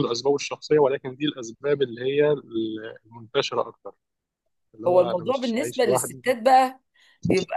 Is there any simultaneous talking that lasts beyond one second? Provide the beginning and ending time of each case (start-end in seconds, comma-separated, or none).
4.9-6.2